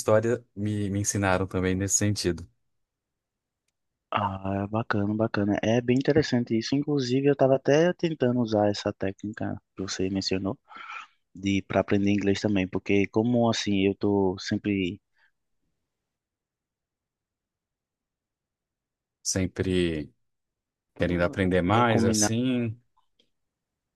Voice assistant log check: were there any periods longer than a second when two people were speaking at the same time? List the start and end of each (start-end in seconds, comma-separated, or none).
21.0-22.3